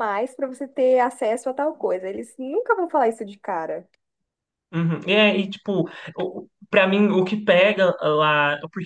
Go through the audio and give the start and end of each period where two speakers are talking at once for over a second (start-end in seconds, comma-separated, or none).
none